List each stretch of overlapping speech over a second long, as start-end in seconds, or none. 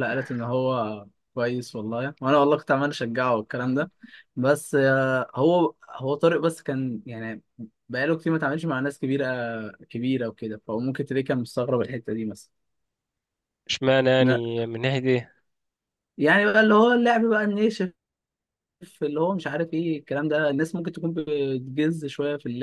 none